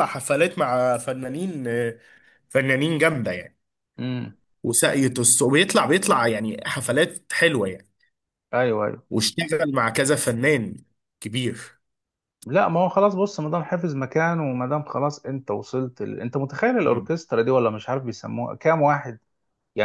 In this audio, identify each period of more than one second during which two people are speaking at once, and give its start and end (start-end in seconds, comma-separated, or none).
none